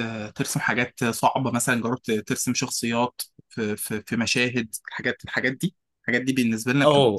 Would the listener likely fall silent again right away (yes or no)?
no